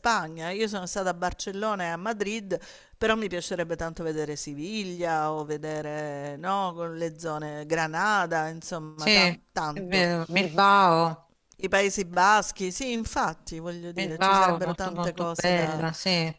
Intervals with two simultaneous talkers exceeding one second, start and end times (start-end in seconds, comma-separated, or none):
14.0-15.8